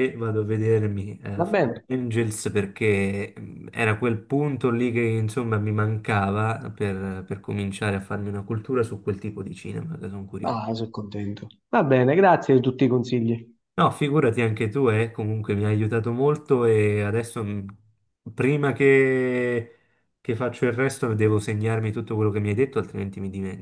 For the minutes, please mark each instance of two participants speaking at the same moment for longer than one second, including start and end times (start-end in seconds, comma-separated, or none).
none